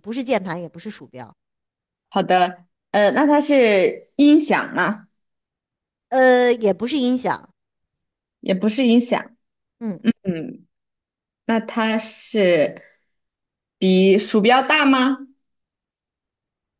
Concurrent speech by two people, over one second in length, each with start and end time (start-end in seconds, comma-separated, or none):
none